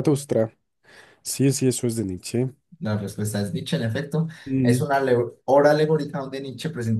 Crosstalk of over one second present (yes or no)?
no